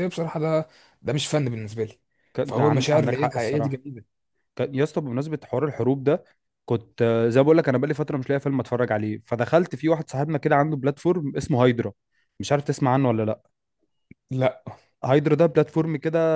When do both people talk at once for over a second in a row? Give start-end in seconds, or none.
2.4-3.8